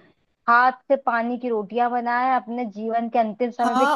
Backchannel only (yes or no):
no